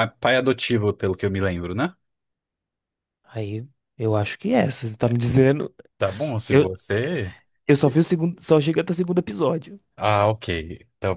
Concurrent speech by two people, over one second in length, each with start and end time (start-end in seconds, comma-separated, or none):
none